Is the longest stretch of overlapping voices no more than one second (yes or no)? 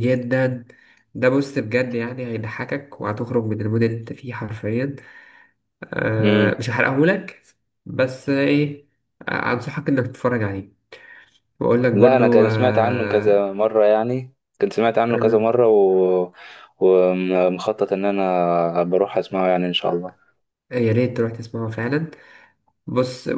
no